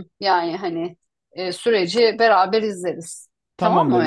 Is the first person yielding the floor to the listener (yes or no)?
yes